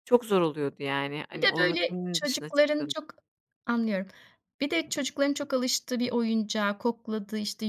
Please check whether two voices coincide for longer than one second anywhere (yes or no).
yes